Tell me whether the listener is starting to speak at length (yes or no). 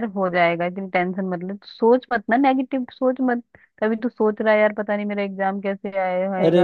yes